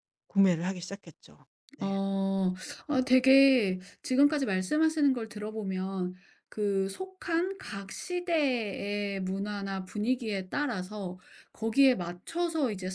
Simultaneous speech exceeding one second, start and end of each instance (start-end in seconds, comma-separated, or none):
none